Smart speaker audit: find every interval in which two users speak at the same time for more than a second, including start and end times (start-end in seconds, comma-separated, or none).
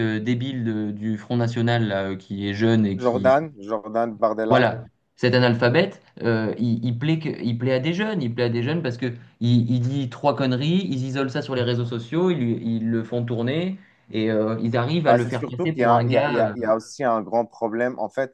15.1-16.5